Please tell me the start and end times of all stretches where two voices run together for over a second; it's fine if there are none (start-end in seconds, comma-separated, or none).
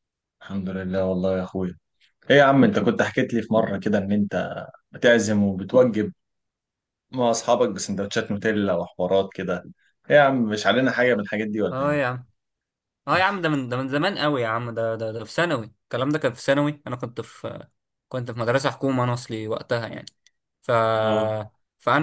none